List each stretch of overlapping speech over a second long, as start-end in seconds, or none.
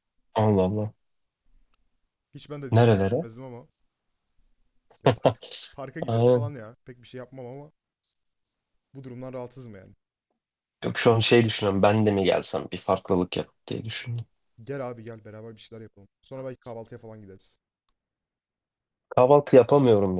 none